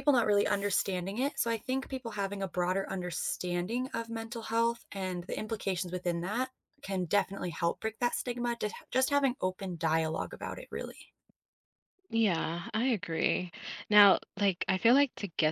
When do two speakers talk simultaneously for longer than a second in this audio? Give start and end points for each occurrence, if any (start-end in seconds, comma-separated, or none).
none